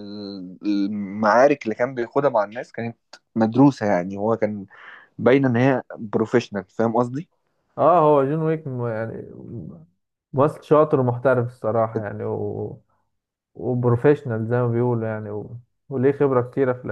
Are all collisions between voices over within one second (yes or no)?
yes